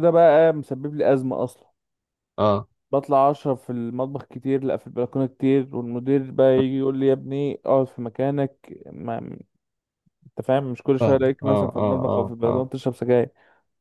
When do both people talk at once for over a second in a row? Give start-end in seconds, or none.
11.0-12.7